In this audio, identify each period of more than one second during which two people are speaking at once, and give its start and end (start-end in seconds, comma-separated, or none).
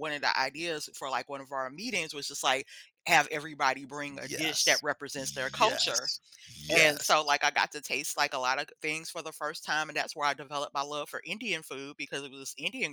4.2-6.1